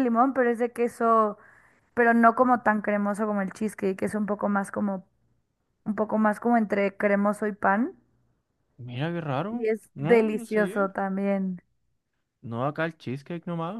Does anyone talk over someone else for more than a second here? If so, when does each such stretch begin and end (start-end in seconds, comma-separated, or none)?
9.5-10.9